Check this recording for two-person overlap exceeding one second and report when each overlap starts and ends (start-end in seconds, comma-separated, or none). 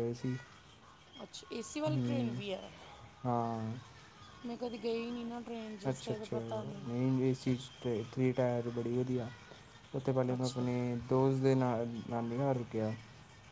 none